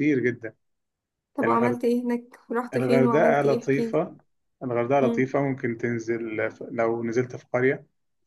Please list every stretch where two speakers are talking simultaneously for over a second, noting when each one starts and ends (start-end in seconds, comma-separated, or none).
2.7-4.0